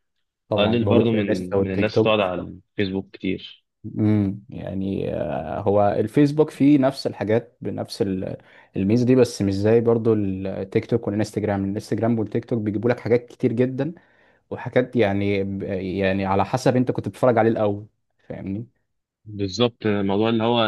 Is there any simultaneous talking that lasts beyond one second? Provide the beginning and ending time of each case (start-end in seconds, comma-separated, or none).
0.6-2.3